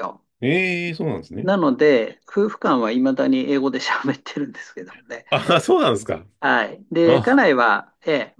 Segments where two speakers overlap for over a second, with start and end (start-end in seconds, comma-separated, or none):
none